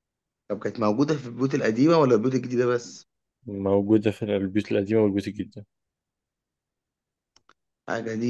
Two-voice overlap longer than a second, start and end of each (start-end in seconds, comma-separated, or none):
none